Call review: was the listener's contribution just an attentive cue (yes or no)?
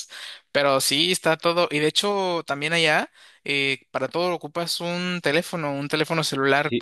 no